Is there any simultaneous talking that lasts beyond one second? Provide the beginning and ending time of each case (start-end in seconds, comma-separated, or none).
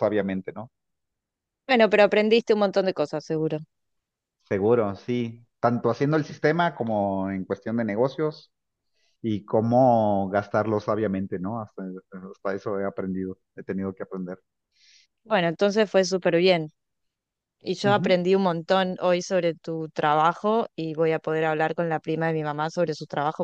none